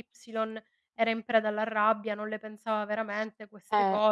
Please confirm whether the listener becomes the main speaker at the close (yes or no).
yes